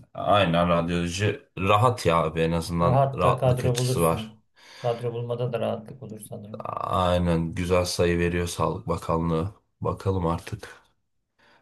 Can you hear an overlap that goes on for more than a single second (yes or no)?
yes